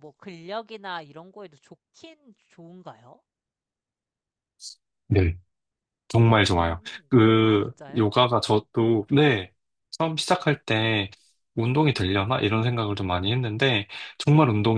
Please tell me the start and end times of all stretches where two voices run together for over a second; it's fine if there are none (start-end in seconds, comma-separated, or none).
6.2-8.3